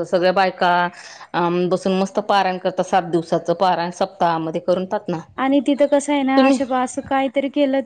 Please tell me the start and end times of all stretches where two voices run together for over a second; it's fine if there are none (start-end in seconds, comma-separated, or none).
none